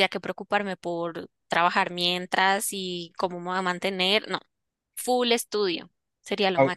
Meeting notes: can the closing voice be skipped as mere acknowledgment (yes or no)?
no